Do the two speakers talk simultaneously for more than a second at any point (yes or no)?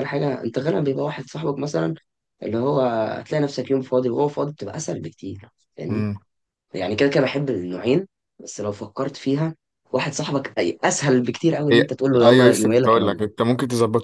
yes